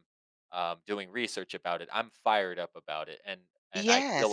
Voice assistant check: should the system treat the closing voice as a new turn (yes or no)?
yes